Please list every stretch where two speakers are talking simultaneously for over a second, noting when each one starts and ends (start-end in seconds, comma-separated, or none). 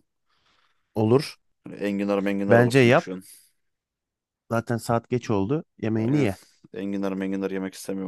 none